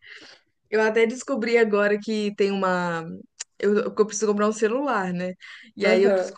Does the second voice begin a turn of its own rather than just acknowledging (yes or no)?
no